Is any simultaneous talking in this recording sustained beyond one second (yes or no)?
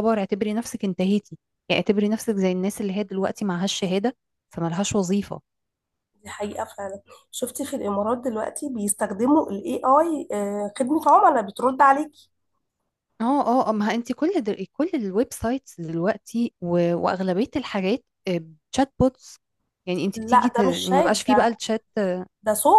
yes